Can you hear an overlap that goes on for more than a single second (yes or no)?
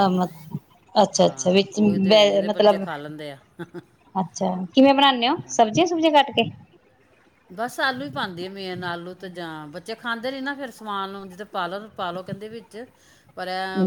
yes